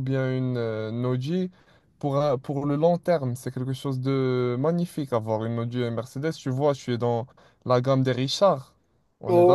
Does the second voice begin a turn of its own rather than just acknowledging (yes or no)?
yes